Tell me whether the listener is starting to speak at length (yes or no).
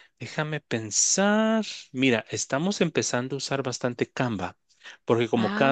no